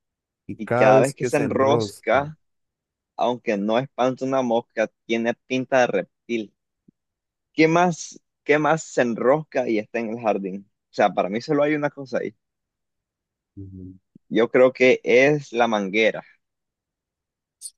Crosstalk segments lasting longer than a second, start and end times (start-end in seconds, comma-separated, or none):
0.6-2.3